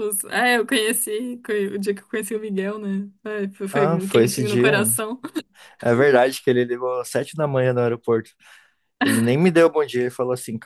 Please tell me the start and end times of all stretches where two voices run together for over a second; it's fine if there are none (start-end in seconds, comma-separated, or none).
3.7-4.9